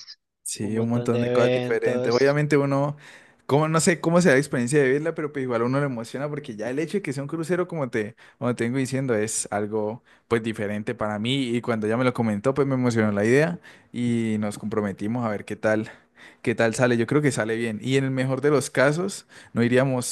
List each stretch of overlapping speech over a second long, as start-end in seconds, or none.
0.6-2.3